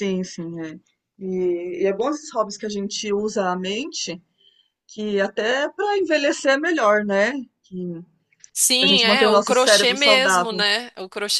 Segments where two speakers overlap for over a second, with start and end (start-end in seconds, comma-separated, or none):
8.8-10.6